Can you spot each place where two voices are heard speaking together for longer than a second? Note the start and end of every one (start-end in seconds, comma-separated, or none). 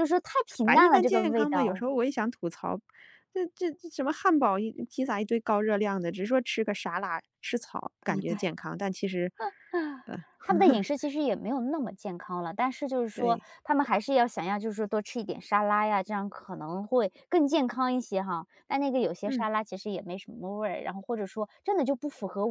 0.6-1.8